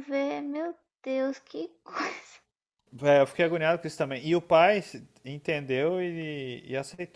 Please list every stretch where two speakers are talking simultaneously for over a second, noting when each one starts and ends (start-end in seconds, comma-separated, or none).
none